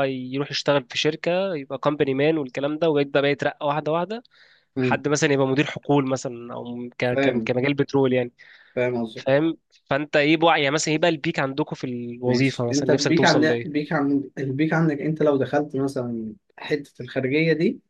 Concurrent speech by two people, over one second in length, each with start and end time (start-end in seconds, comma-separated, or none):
12.2-13.5